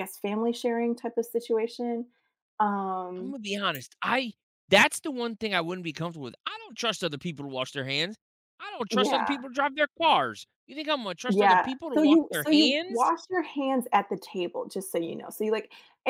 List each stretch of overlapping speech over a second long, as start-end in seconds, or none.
11.3-13.1